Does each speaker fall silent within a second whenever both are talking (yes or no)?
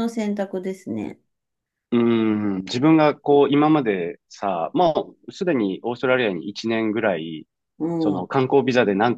yes